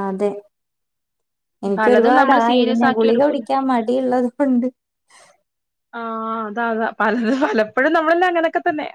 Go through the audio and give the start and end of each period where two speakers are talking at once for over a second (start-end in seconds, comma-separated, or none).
1.8-3.4